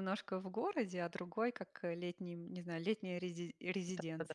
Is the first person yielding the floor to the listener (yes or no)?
yes